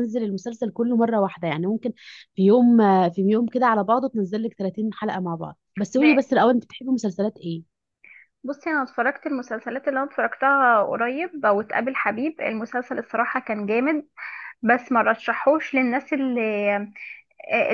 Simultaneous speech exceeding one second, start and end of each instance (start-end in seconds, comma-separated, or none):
none